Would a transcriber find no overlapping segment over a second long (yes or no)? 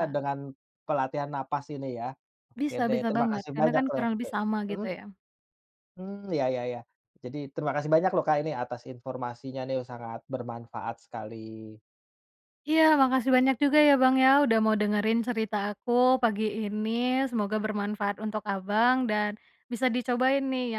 no